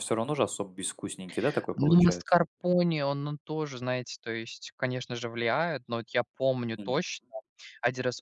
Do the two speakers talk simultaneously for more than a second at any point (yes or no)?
no